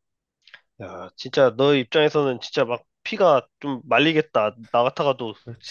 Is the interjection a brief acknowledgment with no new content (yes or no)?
yes